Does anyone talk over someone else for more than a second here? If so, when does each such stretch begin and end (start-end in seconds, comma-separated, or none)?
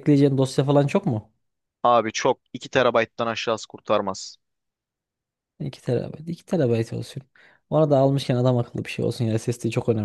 none